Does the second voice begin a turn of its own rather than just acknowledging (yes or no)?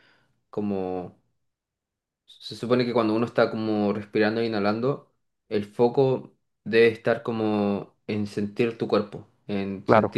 no